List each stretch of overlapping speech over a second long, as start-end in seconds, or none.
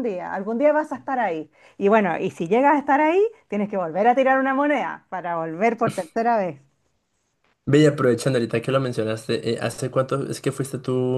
none